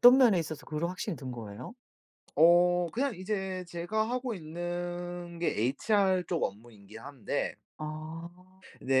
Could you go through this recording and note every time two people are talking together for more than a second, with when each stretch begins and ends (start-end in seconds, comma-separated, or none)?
none